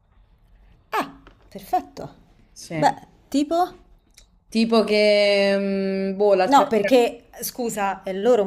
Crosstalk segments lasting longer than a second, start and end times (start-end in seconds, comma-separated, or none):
none